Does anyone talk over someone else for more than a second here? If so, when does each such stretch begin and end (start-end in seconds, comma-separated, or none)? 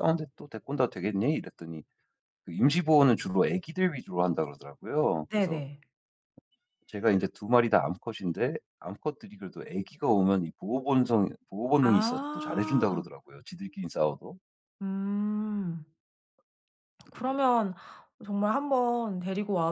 11.8-13.0